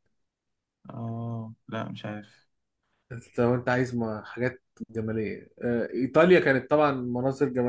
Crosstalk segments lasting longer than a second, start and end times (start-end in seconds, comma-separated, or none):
none